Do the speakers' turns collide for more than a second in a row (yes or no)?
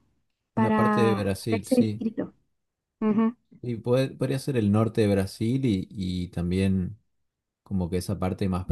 yes